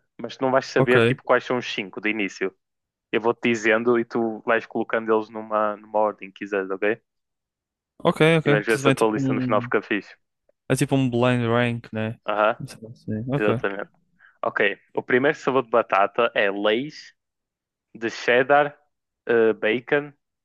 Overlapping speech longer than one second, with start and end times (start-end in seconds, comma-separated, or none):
8.5-9.7